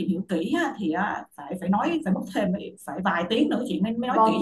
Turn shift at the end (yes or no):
yes